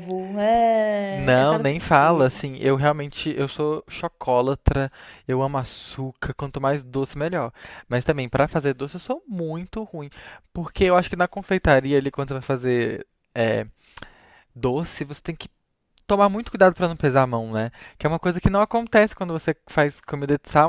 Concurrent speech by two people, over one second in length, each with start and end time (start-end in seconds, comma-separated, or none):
1.1-2.4